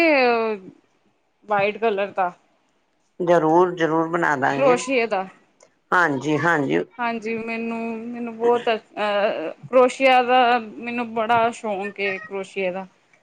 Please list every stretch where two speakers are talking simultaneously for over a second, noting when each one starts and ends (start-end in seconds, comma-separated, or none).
none